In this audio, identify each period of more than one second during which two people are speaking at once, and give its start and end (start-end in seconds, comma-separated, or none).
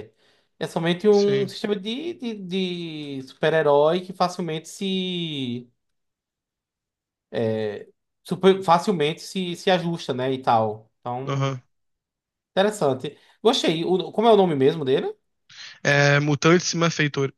none